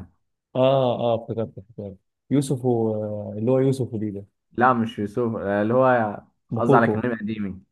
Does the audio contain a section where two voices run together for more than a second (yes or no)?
no